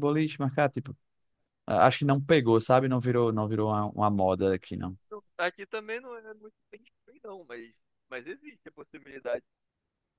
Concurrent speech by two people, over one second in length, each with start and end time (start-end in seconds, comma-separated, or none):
none